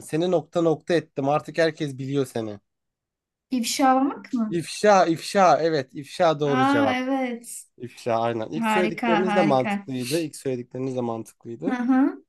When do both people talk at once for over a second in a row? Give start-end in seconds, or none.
8.6-9.9